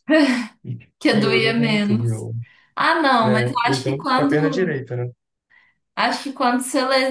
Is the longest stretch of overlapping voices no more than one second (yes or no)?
no